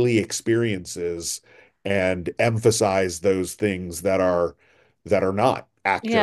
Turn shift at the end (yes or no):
yes